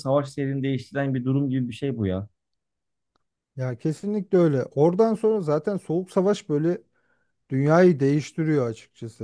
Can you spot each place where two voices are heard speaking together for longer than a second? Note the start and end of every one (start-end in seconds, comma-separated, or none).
none